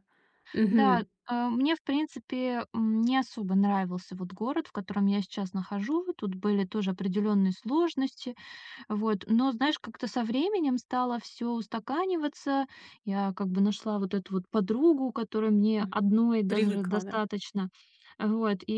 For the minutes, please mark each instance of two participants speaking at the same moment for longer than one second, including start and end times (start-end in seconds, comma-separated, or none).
15.8-17.2